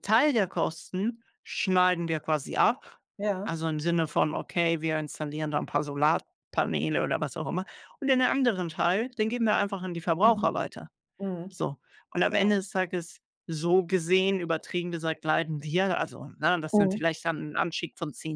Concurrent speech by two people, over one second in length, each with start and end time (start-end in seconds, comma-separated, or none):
none